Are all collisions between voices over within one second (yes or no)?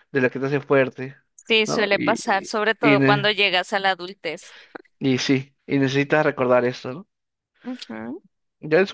no